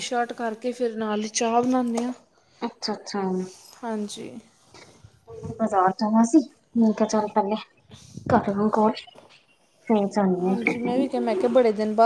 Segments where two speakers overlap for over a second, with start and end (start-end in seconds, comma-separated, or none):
none